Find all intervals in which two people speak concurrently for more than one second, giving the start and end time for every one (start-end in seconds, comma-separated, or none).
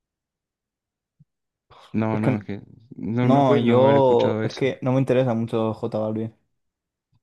3.2-4.7